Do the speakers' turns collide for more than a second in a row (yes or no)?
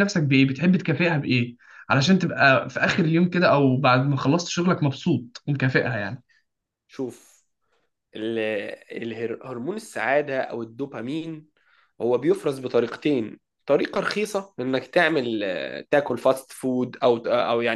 no